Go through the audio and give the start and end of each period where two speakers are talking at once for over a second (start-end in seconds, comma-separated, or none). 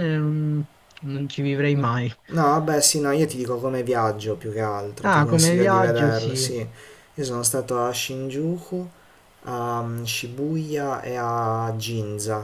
5.0-6.5